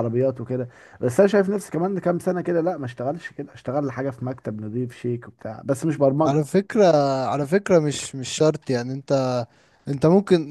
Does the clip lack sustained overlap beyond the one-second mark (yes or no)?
yes